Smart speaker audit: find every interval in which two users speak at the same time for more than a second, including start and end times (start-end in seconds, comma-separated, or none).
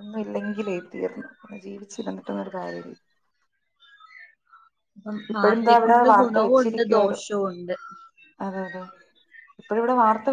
5.3-7.2